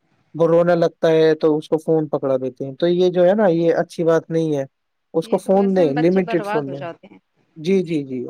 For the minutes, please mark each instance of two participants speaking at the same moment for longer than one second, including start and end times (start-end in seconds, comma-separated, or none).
5.3-6.8